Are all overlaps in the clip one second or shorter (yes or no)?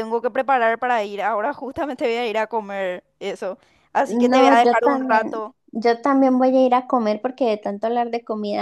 no